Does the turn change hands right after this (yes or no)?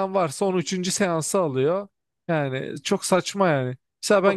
yes